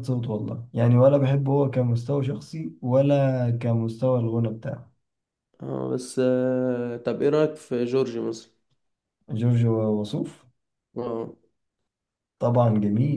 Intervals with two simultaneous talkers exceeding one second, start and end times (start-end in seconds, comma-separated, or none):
none